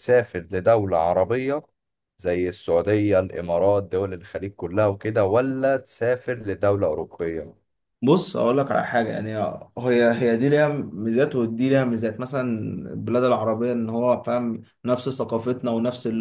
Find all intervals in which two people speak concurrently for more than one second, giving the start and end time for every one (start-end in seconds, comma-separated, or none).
none